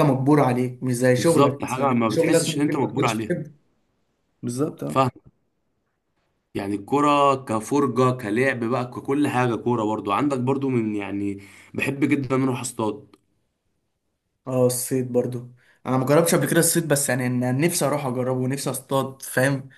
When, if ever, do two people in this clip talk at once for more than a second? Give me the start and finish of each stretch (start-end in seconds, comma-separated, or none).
1.2-3.4